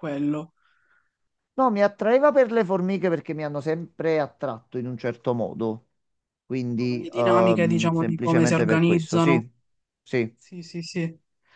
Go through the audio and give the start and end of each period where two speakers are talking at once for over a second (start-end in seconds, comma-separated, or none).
7.0-9.4